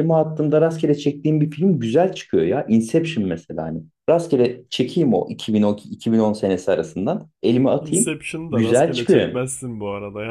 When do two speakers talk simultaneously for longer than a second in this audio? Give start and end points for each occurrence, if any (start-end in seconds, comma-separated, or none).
7.8-9.4